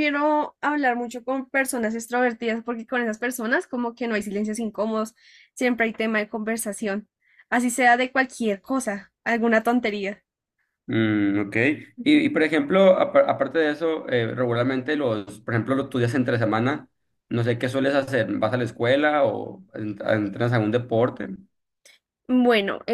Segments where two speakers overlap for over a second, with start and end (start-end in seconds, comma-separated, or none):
none